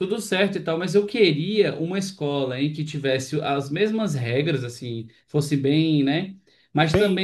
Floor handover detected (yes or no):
no